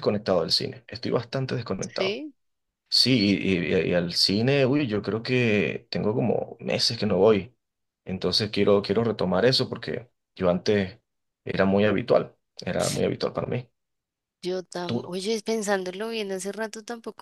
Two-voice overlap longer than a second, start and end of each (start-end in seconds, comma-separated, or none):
none